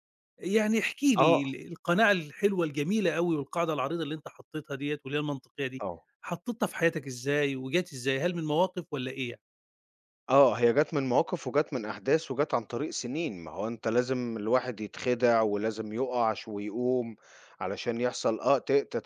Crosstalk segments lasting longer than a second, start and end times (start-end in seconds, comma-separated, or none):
none